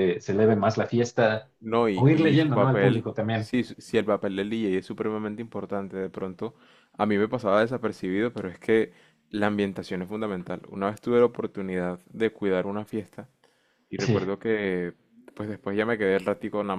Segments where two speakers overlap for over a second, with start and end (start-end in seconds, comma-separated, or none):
1.9-3.5